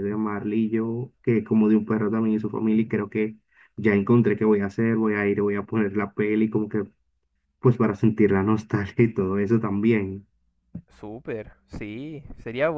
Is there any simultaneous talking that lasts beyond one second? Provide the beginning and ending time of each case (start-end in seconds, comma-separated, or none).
none